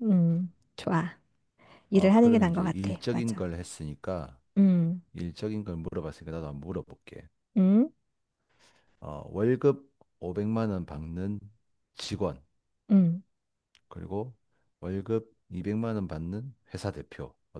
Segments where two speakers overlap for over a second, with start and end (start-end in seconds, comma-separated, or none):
1.9-3.5